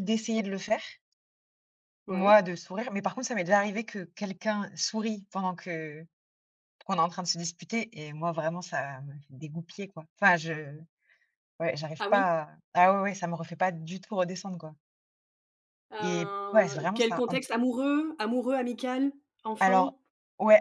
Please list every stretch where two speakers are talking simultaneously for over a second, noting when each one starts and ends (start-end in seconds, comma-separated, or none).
16.0-17.5